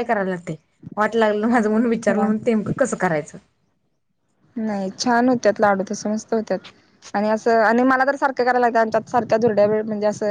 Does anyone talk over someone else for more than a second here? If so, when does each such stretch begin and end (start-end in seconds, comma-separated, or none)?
none